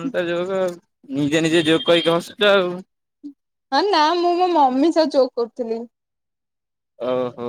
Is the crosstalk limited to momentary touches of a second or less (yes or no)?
yes